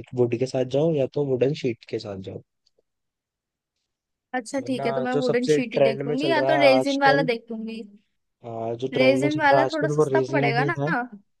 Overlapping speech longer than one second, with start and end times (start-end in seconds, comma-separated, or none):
4.6-7.3, 8.9-10.8